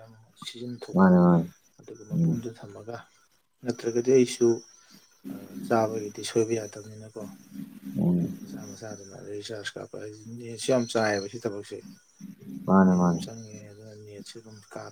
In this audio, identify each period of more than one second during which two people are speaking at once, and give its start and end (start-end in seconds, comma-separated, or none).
none